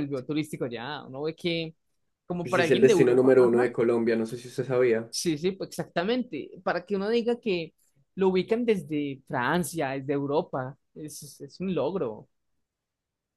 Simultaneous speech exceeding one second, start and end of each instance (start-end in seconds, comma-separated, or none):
2.4-3.7